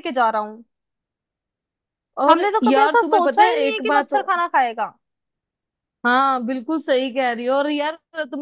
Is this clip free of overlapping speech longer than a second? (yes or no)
no